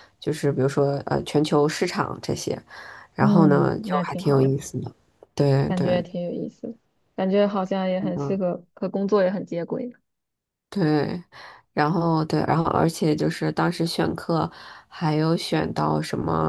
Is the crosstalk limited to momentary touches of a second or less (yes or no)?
no